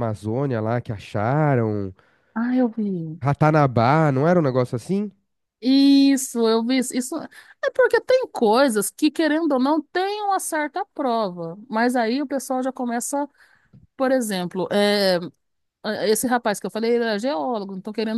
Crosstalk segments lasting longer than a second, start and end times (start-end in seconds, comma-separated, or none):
none